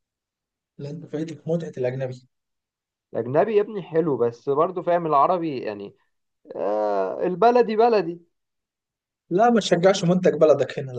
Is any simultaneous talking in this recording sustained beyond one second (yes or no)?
no